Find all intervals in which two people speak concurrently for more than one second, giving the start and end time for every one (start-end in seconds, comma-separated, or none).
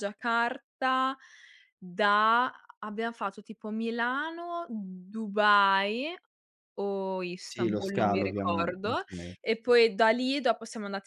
7.5-9.0